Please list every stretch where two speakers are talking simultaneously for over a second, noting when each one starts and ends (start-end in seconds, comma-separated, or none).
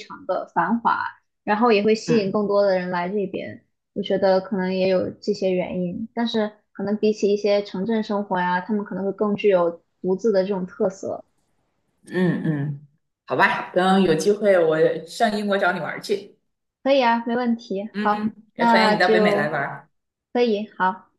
17.9-19.5